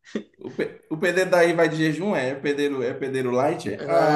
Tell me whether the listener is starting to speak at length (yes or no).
yes